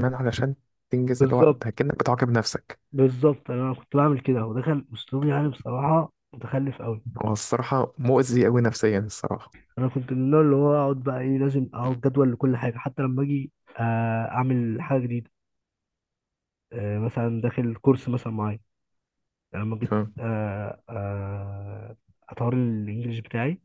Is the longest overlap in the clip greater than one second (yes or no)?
no